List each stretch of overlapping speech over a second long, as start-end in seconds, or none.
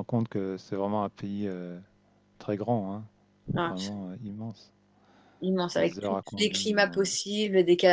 5.8-7.1